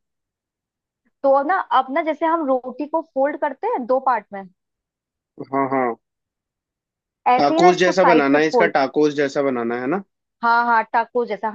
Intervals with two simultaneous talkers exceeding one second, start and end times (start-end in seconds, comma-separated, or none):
7.4-8.7